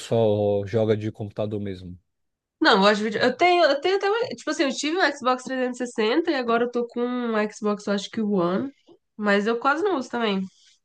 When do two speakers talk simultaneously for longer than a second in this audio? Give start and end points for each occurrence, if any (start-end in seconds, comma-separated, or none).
none